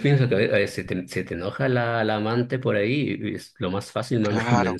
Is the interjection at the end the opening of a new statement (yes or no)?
yes